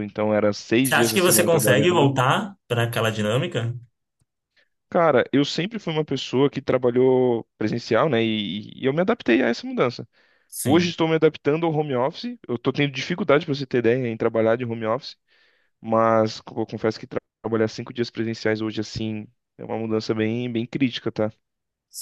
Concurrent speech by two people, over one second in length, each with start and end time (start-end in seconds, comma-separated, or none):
0.8-2.1